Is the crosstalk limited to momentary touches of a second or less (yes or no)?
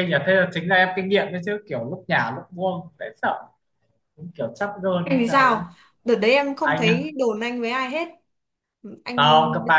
yes